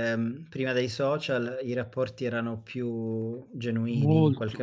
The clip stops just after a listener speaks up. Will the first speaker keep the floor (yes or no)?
no